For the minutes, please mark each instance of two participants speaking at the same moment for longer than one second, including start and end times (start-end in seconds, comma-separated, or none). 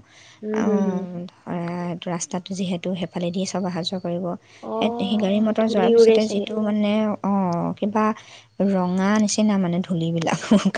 4.8-6.5